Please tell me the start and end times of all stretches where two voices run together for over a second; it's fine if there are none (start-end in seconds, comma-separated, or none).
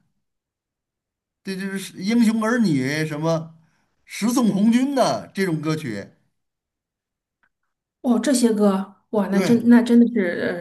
none